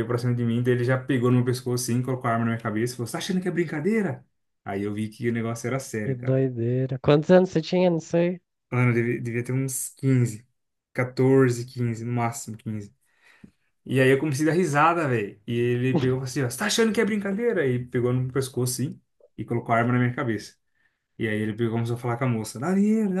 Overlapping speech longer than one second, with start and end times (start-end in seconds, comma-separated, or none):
none